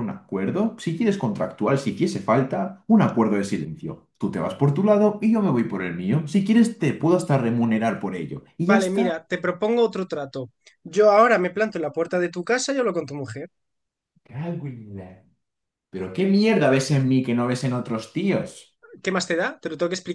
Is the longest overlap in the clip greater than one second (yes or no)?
no